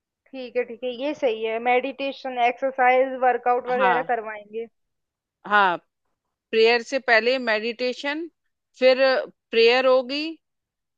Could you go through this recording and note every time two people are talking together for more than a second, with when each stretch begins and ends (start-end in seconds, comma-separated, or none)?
none